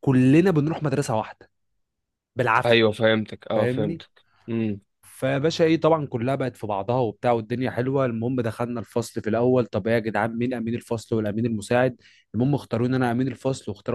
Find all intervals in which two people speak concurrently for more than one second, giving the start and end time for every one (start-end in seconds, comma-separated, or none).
none